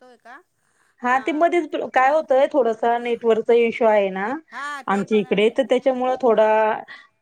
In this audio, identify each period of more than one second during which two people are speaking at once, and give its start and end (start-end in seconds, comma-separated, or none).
4.9-6.7